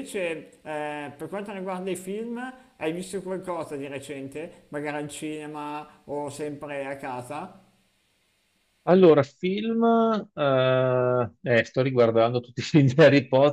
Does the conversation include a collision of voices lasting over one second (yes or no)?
no